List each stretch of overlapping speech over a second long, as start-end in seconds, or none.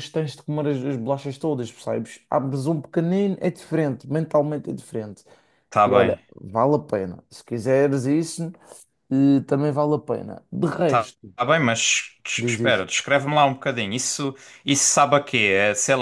none